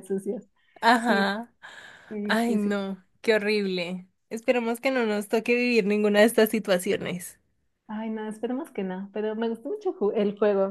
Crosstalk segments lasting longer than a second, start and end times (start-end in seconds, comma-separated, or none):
none